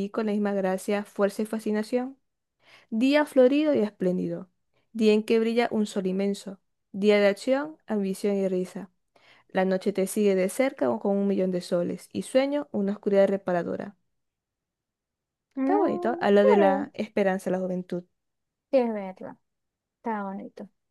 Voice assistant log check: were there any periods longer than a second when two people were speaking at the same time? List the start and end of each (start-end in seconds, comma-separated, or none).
15.6-16.9